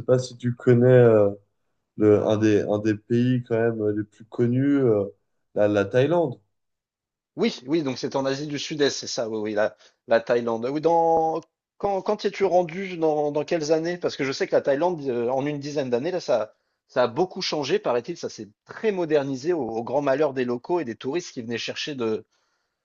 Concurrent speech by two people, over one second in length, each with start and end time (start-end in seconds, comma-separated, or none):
none